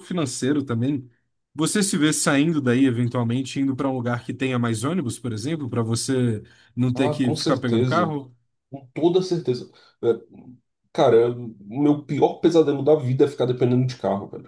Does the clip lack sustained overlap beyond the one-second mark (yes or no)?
no